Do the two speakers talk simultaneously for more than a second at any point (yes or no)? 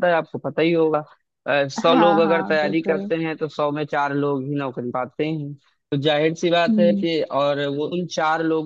yes